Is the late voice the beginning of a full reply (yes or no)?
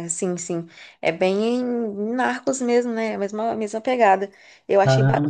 no